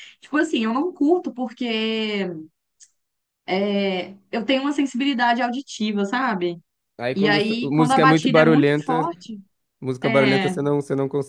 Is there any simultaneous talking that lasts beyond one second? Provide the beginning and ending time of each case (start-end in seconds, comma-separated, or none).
7.1-9.1